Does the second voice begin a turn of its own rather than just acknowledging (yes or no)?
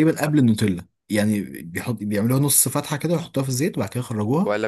yes